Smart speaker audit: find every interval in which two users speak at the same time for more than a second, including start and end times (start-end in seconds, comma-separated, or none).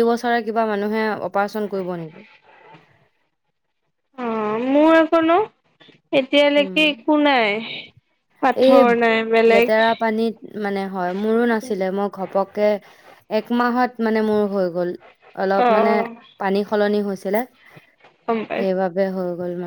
none